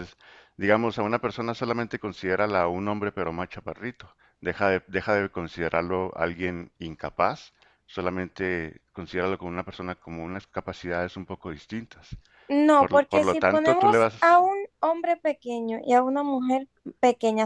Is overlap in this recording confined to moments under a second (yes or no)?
no